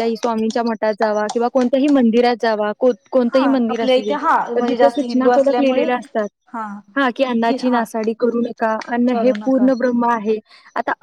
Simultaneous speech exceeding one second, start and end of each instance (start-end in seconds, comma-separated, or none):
3.3-5.9